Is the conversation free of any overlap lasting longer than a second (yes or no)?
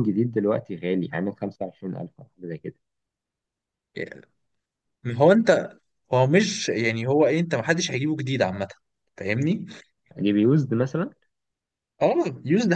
yes